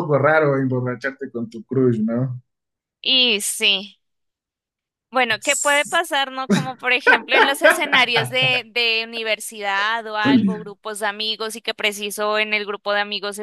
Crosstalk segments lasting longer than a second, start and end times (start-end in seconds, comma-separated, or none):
none